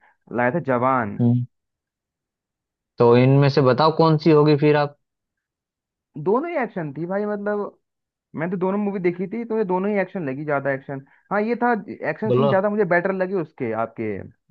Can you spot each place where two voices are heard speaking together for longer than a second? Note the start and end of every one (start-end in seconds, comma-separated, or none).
none